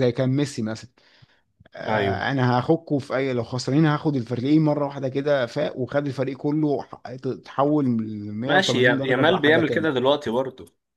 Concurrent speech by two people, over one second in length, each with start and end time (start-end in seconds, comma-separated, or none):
8.5-9.9